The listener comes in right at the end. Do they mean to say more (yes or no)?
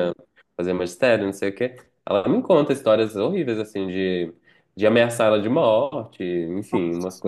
no